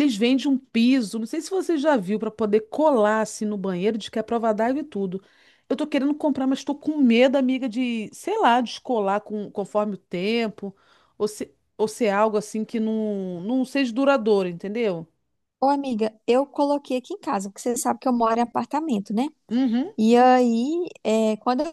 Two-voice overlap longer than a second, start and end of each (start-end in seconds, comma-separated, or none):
none